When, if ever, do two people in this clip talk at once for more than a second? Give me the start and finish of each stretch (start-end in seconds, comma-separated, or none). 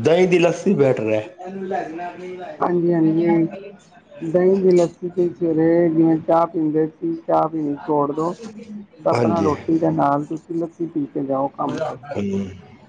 none